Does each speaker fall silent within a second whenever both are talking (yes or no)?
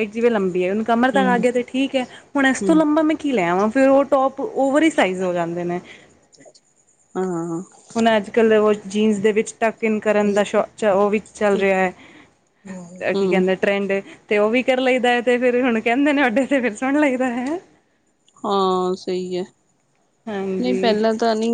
yes